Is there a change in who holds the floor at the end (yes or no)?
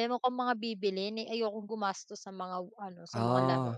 no